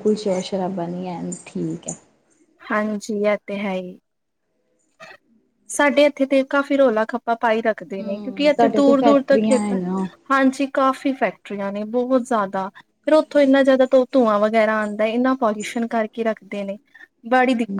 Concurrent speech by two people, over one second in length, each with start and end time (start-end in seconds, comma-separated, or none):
8.0-9.7